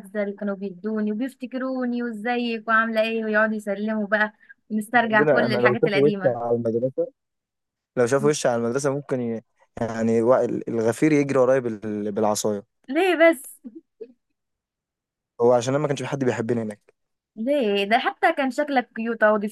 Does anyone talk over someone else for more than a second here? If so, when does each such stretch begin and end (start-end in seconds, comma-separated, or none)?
5.1-6.4